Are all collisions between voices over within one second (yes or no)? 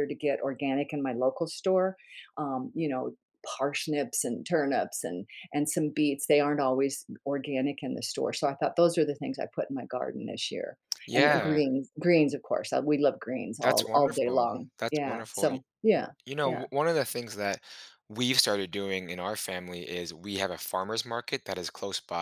no